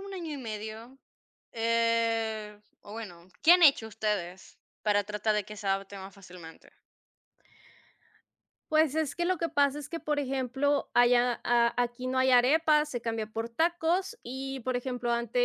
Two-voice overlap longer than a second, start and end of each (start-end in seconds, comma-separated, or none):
none